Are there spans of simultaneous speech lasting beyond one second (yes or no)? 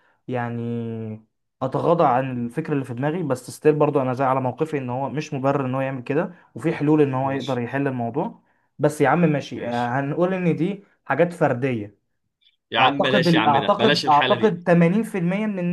yes